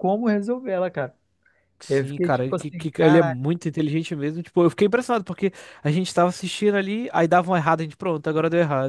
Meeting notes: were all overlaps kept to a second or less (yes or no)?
no